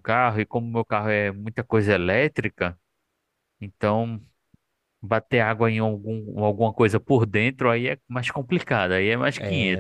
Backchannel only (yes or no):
no